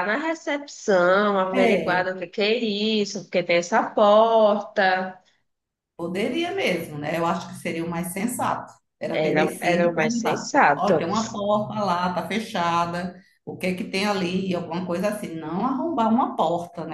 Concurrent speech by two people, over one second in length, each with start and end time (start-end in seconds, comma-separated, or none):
9.1-11.1